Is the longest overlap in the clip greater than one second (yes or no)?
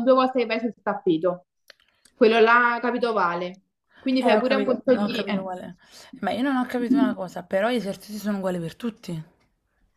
yes